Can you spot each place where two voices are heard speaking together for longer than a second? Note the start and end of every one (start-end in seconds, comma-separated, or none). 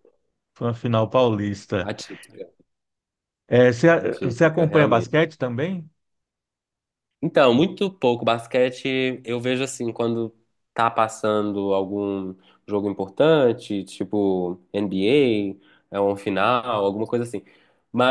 3.9-5.2